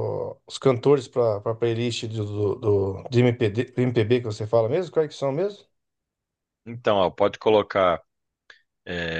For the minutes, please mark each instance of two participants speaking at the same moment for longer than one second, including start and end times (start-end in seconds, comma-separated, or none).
none